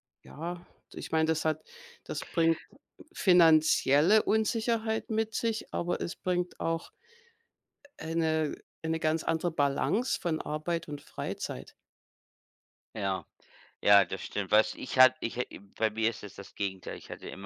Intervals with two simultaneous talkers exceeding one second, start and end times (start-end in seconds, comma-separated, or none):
none